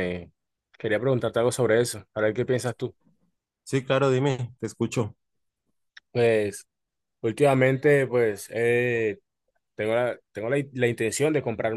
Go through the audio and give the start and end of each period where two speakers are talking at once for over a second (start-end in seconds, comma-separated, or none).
none